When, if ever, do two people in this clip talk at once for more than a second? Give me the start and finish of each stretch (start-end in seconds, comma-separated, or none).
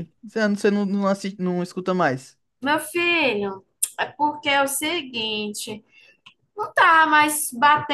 none